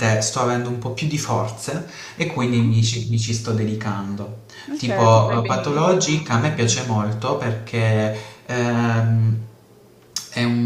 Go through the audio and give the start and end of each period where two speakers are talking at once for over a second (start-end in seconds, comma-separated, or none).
4.8-6.2